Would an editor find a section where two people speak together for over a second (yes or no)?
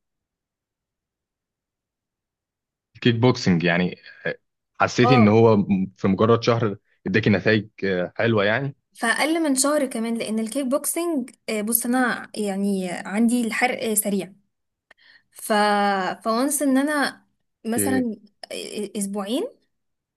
no